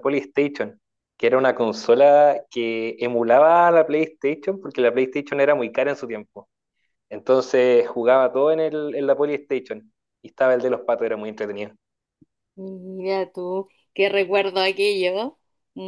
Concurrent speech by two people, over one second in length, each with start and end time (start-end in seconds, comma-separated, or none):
none